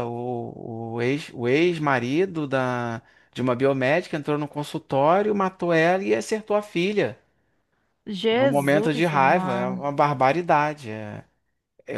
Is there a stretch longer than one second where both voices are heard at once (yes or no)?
yes